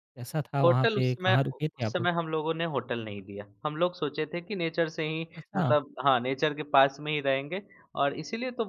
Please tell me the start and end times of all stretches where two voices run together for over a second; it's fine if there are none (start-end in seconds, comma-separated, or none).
0.6-2.1